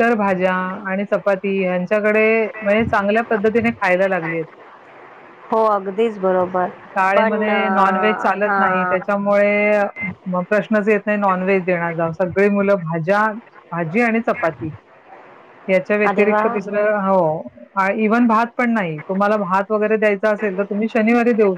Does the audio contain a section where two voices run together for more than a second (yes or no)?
yes